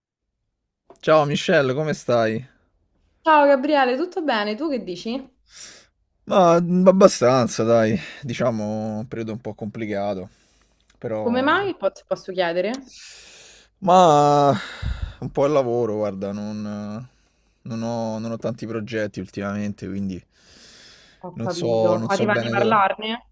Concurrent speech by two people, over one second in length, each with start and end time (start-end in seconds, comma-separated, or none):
21.3-22.8